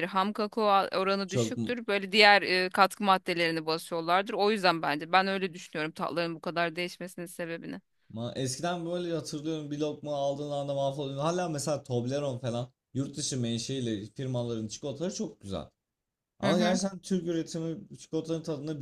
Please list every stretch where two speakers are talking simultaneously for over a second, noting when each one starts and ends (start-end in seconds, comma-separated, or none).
none